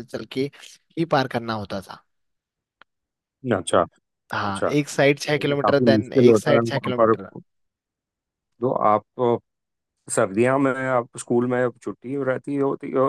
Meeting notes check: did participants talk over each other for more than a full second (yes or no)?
yes